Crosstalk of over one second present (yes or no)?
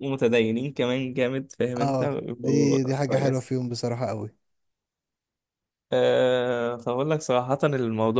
yes